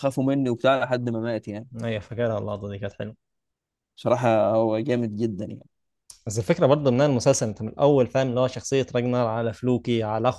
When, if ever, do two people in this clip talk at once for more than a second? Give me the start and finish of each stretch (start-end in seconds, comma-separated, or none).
none